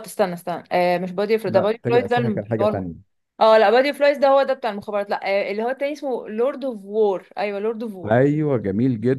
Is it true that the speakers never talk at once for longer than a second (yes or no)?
no